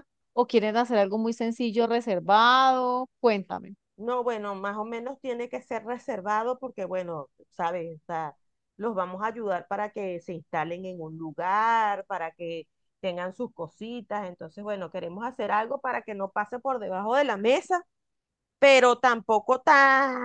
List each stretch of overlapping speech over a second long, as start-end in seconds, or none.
none